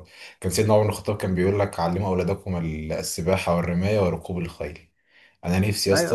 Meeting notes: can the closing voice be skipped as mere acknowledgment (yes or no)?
no